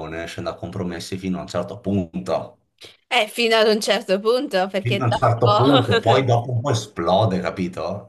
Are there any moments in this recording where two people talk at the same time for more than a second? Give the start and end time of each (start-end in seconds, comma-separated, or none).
4.8-6.2